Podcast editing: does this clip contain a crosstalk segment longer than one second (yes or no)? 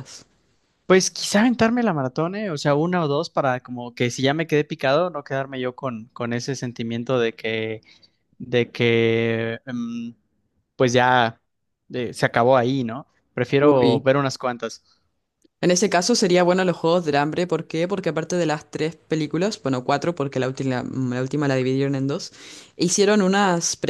no